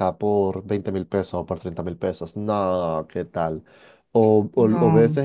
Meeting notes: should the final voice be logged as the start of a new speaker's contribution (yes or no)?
no